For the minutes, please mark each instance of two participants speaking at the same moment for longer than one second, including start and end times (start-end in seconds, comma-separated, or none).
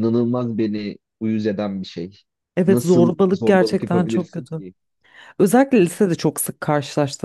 2.7-4.6